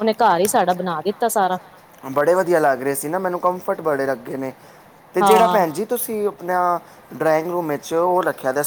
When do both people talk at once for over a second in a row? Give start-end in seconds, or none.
none